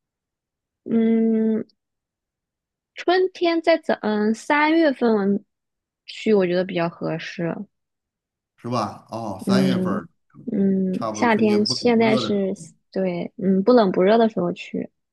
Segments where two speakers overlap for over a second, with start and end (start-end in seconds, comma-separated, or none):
10.9-12.5